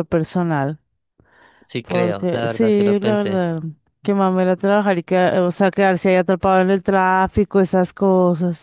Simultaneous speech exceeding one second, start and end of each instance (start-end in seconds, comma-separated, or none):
1.8-3.4